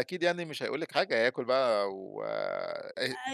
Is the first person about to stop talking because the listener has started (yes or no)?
yes